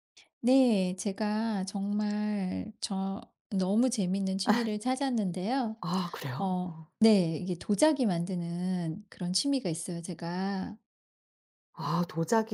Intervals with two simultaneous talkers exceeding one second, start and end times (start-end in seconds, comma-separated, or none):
none